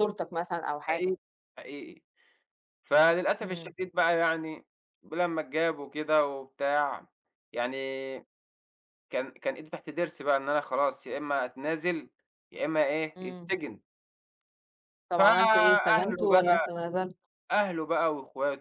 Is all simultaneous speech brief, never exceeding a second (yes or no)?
no